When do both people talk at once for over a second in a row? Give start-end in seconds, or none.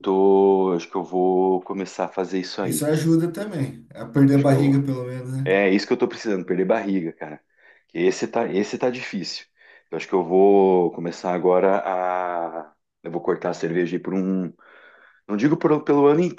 none